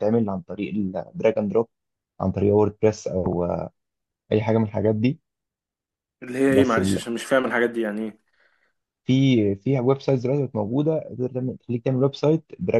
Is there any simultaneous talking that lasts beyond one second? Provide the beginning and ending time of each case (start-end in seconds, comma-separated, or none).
none